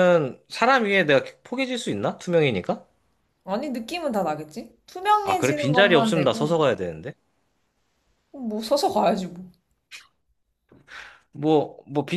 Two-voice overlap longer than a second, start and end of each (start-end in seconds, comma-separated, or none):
5.2-6.6